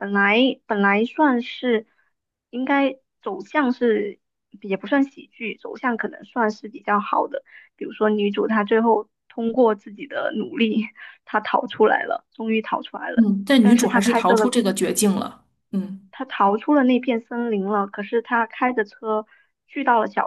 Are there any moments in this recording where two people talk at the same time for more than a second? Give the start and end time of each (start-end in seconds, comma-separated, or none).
13.1-14.5